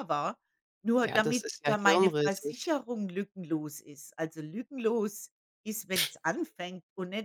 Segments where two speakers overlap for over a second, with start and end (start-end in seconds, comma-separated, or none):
1.0-2.6